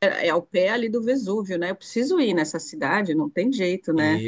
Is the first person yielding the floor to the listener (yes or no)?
yes